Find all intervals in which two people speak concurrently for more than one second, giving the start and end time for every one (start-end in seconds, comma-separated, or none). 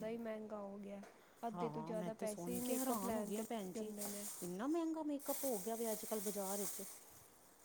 1.5-3.9